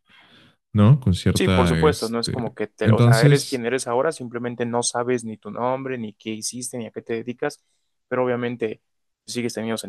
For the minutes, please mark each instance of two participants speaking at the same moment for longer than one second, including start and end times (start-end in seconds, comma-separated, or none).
1.3-3.6